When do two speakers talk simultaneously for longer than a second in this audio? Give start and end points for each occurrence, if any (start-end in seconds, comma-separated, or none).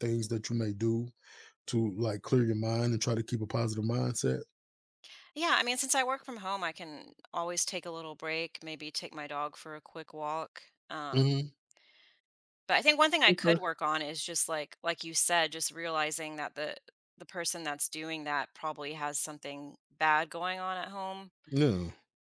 none